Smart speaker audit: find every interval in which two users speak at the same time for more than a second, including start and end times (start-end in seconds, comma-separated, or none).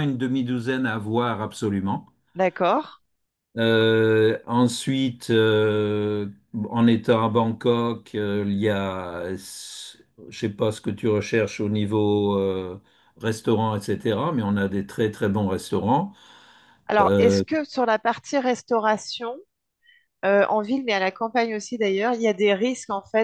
none